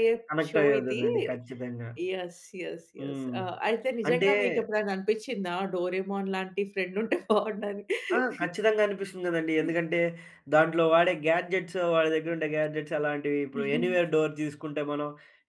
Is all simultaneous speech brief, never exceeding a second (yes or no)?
yes